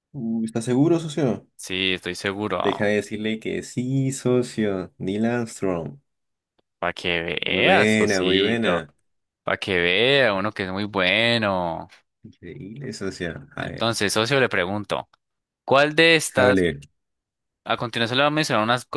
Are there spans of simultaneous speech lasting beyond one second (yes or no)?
yes